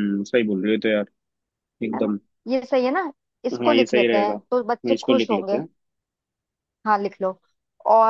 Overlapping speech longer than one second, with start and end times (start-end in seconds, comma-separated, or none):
3.5-5.6